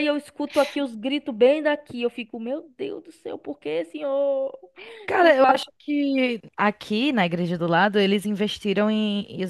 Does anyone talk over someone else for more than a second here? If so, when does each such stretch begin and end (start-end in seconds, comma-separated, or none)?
none